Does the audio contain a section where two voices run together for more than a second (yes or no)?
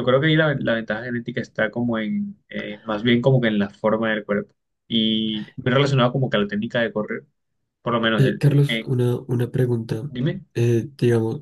no